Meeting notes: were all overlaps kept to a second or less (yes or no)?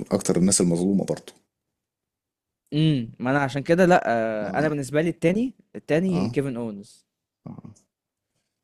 yes